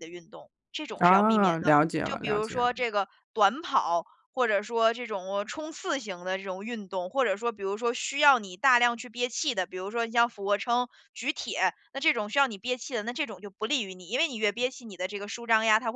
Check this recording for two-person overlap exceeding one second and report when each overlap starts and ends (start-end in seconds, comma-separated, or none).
1.0-2.7